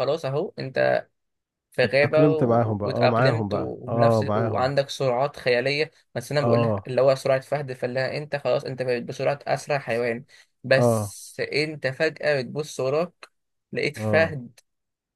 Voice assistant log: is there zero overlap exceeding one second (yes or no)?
no